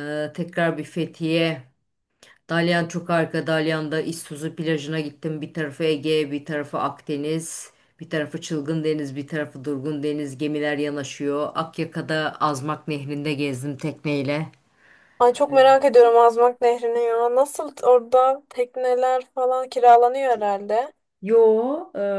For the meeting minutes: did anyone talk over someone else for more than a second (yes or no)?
no